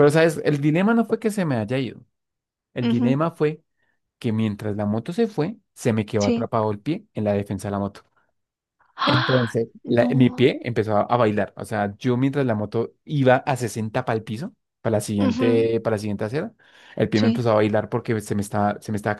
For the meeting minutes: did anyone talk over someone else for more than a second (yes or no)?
yes